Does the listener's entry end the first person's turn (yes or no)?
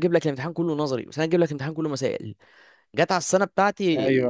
no